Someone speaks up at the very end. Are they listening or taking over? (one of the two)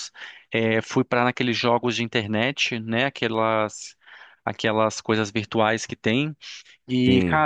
listening